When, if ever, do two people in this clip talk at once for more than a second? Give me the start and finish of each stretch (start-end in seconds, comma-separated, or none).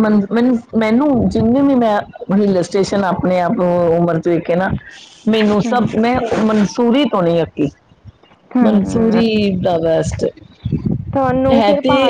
none